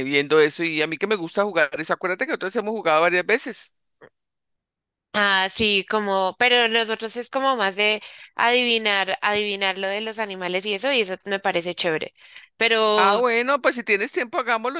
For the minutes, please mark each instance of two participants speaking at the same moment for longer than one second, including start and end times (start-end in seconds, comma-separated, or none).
none